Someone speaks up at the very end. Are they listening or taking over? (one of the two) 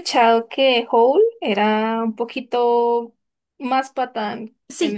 taking over